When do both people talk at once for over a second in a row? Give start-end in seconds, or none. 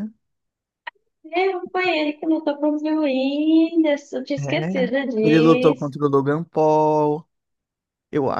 4.4-5.9